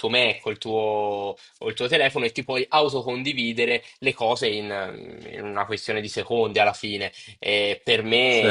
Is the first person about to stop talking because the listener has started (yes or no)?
no